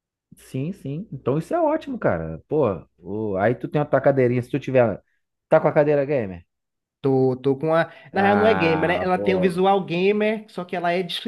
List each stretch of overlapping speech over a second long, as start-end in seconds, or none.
8.1-9.6